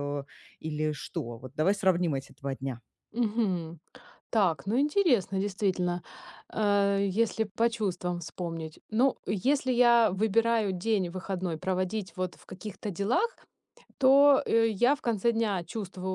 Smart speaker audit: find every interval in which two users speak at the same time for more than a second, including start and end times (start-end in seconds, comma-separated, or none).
none